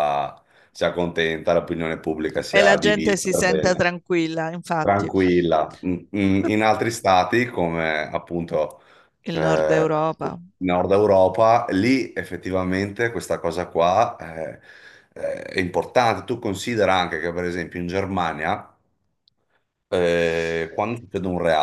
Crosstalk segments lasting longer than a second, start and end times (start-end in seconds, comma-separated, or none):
2.5-3.9